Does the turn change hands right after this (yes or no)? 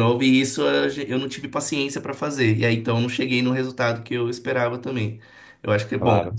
no